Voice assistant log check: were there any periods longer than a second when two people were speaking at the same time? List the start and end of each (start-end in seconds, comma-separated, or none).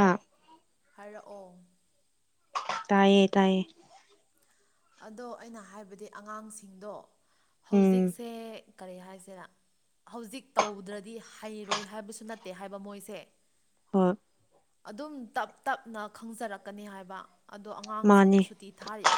none